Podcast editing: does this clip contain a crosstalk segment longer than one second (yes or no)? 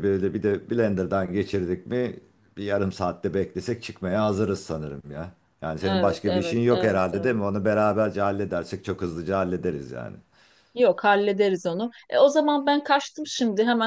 yes